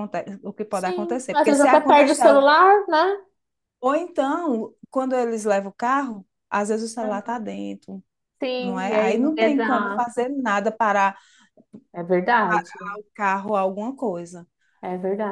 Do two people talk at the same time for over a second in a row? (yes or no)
yes